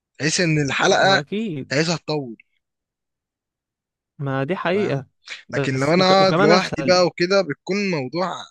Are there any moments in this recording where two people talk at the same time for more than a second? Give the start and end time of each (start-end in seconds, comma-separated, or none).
5.5-7.0